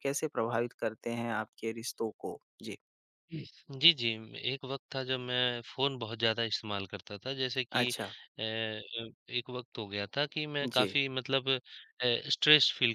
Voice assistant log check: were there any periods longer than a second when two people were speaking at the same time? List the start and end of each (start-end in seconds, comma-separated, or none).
none